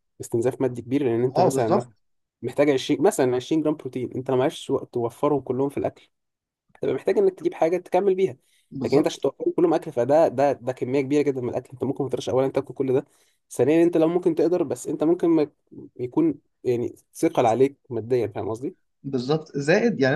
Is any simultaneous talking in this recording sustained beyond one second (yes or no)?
no